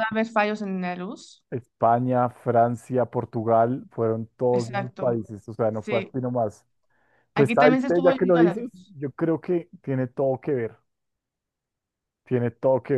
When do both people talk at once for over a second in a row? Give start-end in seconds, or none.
7.4-8.9